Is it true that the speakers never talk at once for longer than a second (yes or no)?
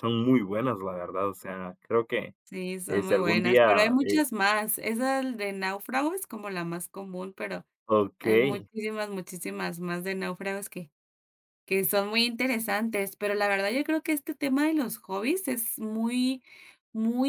no